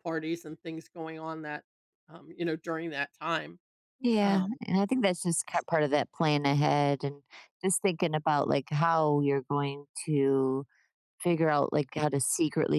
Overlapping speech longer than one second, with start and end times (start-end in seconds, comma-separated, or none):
none